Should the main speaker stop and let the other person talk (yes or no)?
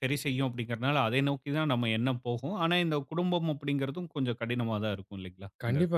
yes